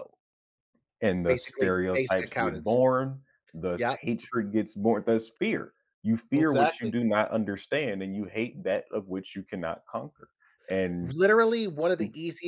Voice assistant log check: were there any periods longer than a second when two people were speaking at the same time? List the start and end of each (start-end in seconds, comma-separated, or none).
1.2-2.8